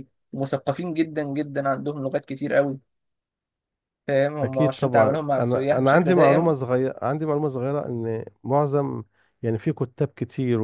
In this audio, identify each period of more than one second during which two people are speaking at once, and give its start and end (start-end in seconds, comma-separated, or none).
4.4-6.5